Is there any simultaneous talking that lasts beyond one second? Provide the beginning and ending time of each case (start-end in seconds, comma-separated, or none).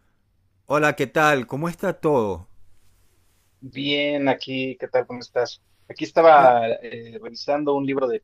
none